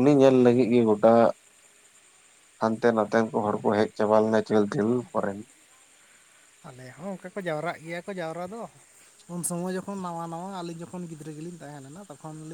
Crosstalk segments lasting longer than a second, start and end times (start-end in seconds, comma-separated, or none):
none